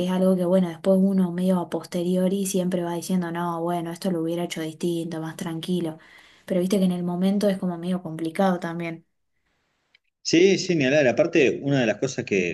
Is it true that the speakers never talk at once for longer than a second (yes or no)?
yes